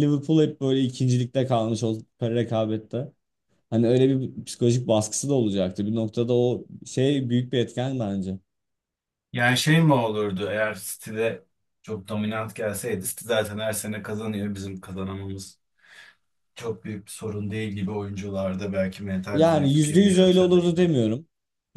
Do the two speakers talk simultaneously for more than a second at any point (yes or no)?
yes